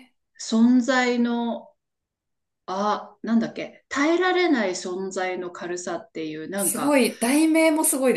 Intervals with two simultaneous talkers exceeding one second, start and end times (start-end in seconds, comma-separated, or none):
none